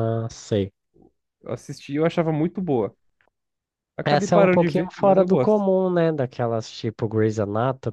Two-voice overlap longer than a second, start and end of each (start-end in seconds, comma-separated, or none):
4.0-5.6